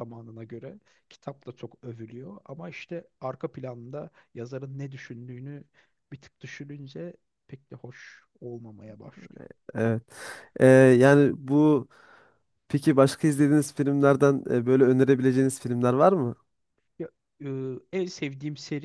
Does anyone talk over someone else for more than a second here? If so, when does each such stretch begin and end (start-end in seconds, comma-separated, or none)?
none